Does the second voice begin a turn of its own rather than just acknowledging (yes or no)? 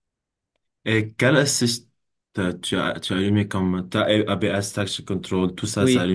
yes